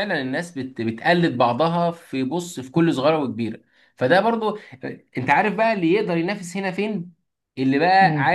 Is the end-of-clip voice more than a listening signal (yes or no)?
no